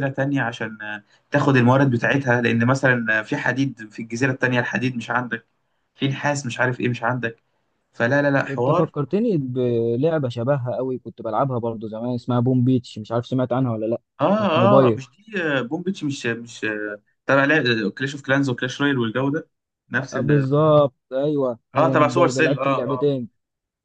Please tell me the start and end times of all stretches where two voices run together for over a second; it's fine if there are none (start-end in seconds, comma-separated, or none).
21.8-23.1